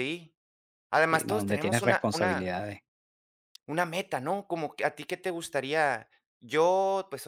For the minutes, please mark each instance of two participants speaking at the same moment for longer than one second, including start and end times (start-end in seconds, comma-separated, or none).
1.1-2.5